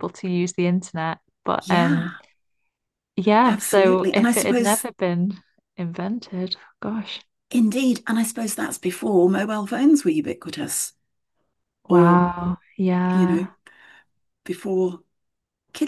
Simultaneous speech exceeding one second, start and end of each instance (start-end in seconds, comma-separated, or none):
3.5-4.8